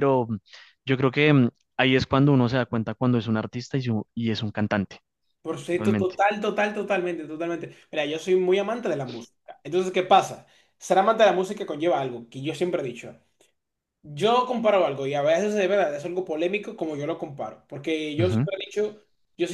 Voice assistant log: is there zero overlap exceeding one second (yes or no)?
yes